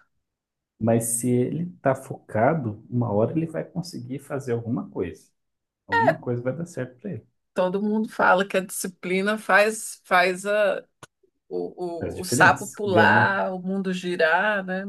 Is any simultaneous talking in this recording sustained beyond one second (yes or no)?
yes